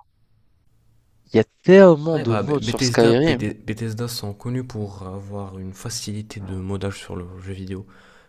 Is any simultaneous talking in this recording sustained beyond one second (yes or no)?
yes